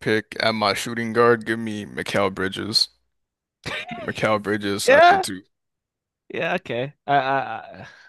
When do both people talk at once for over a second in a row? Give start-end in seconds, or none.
none